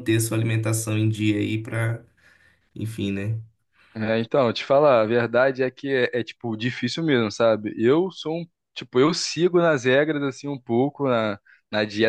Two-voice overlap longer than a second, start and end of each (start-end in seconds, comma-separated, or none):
none